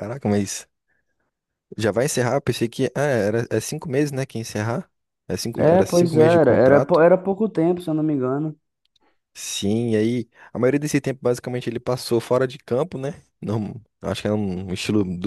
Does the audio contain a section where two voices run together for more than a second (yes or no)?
yes